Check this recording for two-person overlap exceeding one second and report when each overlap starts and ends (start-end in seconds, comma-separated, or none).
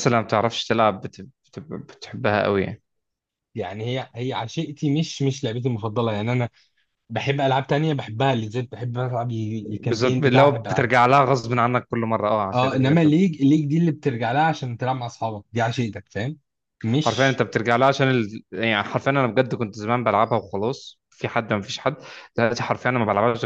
9.6-10.9